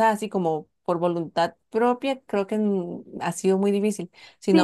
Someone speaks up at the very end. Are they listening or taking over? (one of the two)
listening